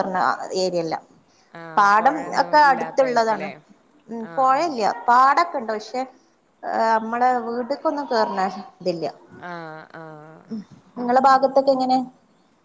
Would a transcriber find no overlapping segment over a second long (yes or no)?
no